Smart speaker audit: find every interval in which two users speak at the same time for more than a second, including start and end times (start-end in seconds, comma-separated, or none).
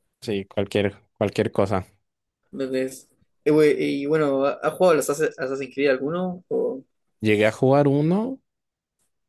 none